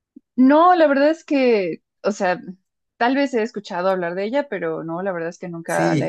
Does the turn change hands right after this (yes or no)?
yes